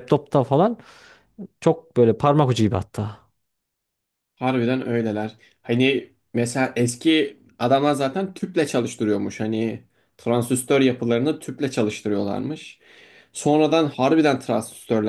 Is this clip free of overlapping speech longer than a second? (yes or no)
yes